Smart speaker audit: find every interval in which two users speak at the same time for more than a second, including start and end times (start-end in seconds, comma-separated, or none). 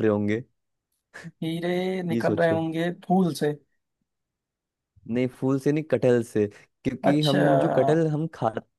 none